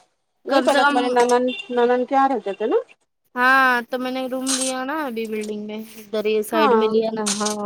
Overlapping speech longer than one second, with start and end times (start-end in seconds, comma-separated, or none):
none